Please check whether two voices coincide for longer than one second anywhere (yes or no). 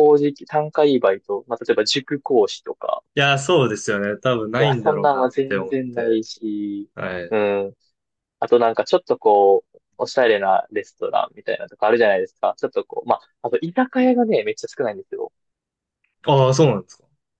yes